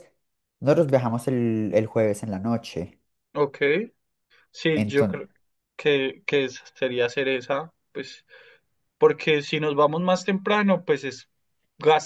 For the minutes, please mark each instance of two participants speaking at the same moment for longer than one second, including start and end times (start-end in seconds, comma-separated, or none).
none